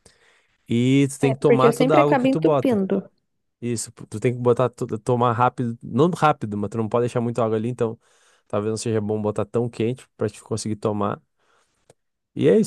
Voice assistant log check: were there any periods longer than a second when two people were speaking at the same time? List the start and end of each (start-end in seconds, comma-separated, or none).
1.2-2.8